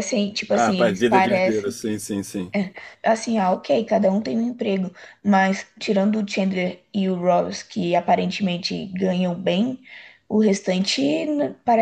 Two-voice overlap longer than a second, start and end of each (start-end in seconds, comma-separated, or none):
0.5-1.8